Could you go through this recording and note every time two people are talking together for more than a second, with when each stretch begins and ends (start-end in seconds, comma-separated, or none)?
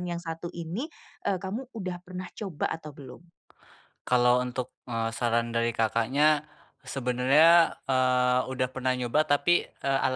none